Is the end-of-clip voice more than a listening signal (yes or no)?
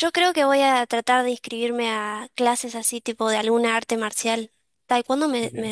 no